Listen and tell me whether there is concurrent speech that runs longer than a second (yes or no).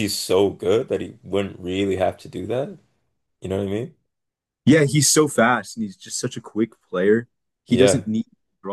no